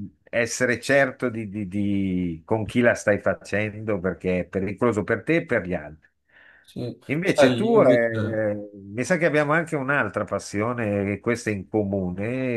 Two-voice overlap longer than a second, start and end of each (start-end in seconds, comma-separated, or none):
7.1-8.5